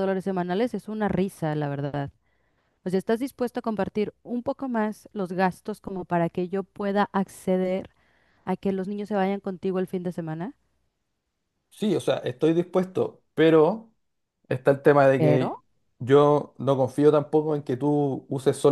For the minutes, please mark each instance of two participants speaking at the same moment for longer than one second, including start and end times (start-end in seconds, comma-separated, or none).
none